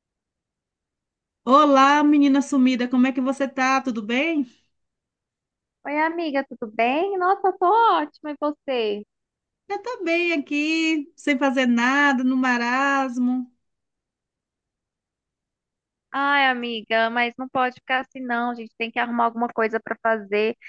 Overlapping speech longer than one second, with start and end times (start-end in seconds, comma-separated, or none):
none